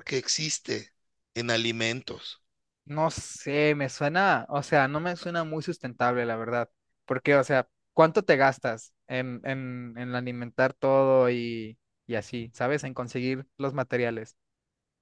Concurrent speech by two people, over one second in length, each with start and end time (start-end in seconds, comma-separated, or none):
none